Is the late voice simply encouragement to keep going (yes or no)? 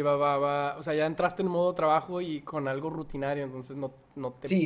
no